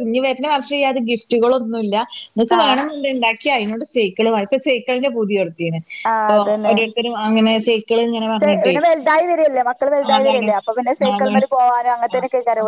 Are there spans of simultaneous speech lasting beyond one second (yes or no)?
no